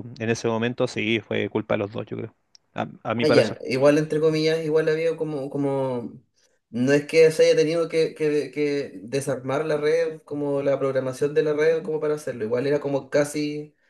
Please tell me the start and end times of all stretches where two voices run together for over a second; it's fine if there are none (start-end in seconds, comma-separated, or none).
none